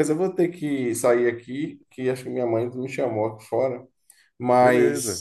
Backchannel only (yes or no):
yes